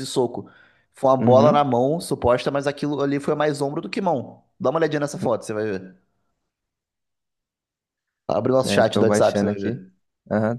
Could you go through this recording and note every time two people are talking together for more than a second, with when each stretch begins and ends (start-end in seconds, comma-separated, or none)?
8.6-9.8